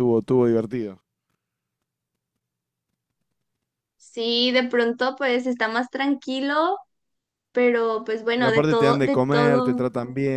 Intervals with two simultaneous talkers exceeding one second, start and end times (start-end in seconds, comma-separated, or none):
8.3-9.8